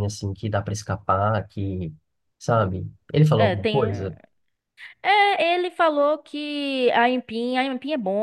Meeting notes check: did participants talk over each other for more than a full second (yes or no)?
no